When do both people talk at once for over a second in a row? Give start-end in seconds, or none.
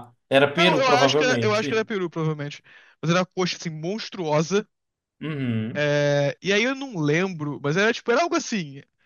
0.6-1.9